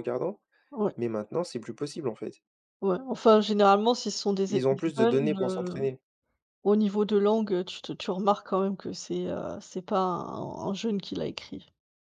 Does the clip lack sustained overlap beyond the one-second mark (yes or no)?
no